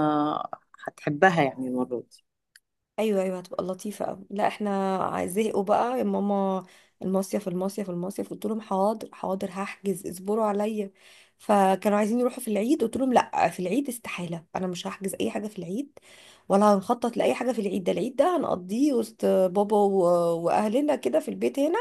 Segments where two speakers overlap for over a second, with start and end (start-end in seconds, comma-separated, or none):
none